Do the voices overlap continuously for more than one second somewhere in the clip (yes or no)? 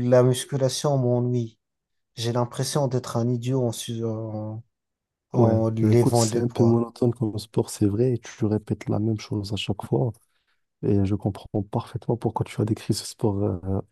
yes